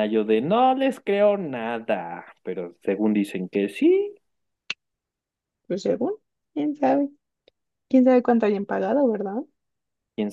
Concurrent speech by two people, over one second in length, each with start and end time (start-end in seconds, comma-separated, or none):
none